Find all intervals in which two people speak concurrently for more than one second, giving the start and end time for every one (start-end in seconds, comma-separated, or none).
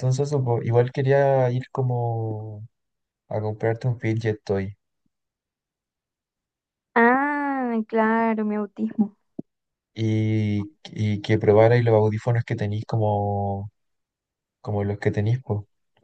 none